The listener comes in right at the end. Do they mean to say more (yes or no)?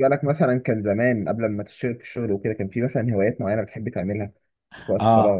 yes